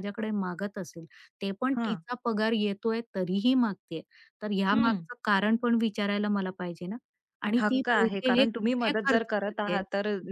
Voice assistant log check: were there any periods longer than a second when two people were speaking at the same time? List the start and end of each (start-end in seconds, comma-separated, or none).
7.6-9.8